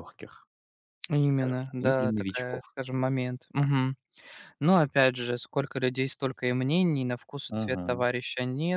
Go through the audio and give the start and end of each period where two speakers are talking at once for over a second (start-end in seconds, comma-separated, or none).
1.3-2.8